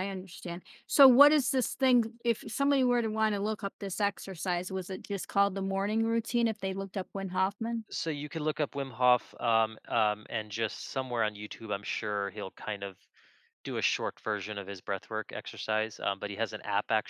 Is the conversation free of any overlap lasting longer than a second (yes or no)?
yes